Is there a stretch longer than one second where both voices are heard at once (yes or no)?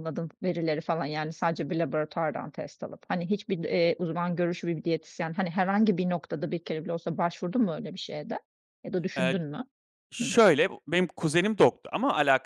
no